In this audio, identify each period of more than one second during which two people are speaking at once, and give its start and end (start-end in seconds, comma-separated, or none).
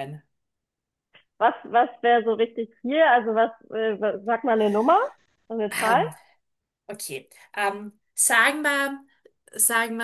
none